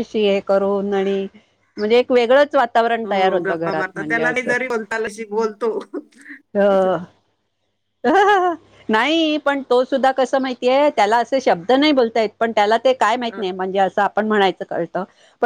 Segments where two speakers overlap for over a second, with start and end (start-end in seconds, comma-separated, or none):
3.0-4.5